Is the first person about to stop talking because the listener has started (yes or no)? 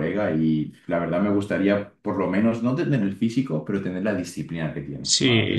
yes